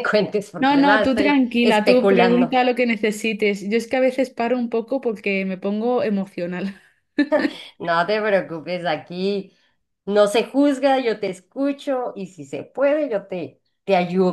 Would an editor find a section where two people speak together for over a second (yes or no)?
yes